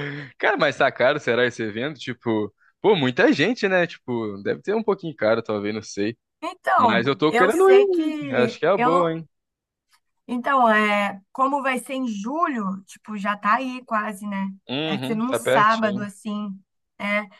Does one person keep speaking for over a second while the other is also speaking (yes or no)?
yes